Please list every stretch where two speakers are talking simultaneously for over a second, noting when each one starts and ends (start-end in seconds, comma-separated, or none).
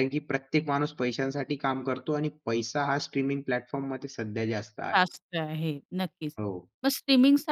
none